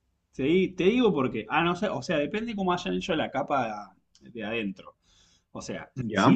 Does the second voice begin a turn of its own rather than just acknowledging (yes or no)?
no